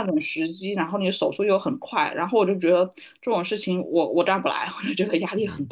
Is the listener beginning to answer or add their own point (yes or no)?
yes